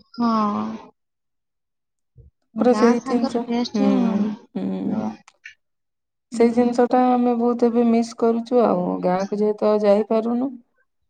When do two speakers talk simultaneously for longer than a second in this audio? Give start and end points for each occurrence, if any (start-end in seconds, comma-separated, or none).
2.7-5.1